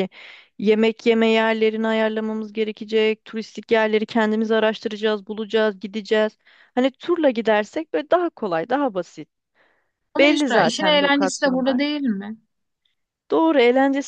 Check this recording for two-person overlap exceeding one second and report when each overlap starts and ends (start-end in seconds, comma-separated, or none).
10.2-11.8